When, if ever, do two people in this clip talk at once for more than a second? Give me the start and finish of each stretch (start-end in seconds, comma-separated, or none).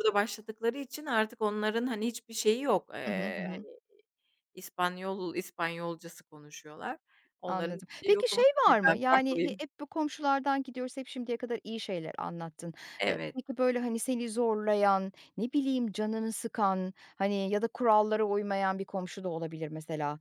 7.5-9.6